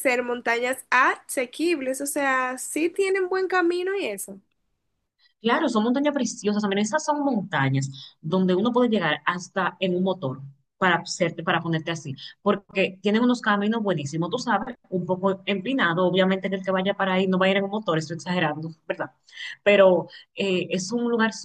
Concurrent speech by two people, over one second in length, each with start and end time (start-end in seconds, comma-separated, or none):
none